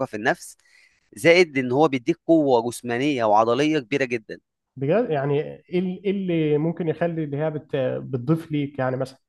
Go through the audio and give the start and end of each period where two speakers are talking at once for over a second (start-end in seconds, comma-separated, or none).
none